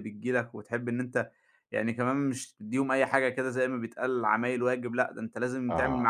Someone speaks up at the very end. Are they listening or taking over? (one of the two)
listening